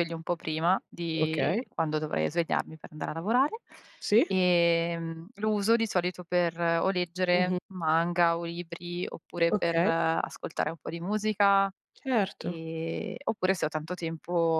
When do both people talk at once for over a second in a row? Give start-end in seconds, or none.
none